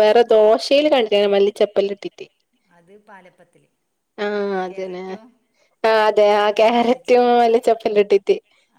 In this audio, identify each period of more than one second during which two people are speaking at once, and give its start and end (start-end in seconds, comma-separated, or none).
none